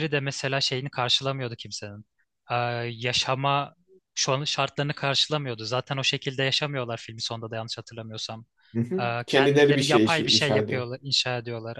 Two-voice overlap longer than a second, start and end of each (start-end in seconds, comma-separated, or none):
9.0-10.8